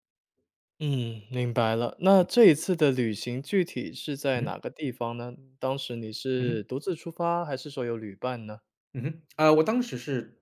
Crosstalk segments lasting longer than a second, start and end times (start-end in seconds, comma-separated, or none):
none